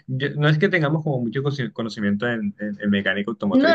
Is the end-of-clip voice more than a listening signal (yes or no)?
yes